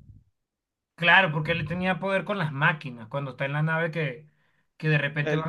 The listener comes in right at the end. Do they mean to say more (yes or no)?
no